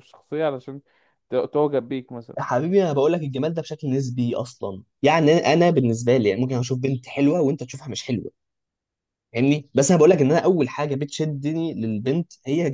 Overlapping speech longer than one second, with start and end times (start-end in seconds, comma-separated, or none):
none